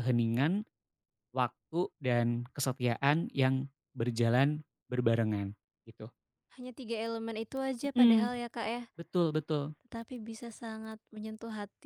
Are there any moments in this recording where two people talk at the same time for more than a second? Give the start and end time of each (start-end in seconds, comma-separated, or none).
none